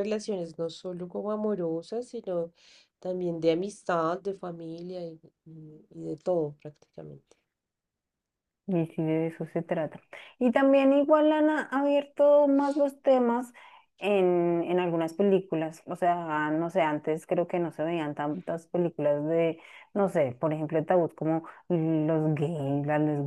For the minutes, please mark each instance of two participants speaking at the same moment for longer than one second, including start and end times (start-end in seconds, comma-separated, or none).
none